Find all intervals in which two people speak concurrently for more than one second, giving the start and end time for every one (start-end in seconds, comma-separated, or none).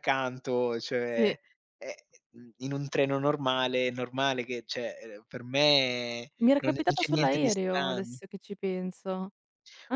6.4-8.2